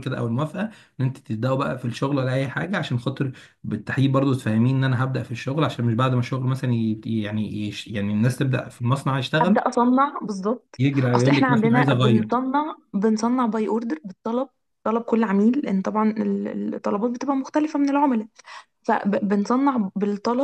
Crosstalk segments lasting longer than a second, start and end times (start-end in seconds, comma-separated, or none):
10.8-12.3